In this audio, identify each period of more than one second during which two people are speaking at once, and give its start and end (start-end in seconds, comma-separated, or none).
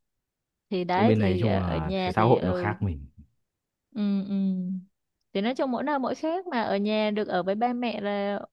0.9-2.7